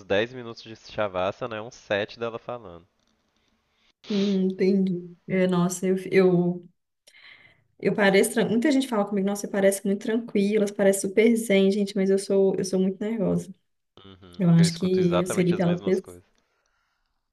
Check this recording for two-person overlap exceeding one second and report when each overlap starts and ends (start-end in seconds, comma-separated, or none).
14.4-16.2